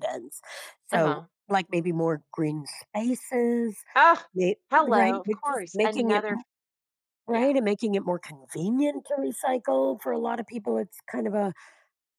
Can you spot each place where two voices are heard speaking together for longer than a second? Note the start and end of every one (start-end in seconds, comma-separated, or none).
4.7-6.2